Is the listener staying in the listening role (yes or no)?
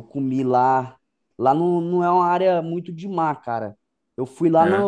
yes